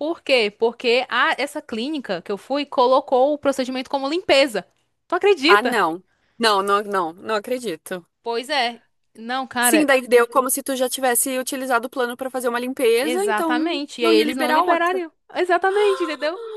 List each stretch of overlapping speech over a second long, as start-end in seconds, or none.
13.0-15.0